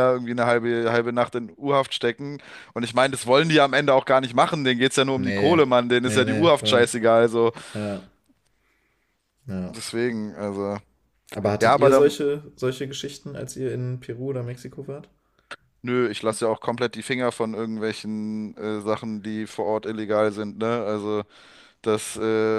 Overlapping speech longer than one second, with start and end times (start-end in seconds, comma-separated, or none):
5.1-6.9